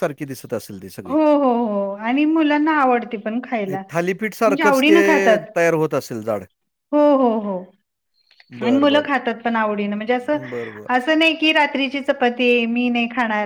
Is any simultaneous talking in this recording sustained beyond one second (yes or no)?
no